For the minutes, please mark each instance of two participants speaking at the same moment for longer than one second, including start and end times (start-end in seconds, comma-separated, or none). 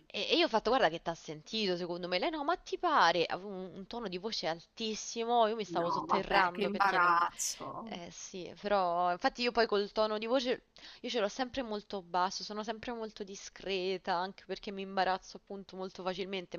5.7-7.2